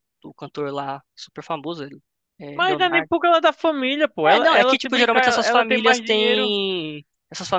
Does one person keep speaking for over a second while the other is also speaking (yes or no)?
yes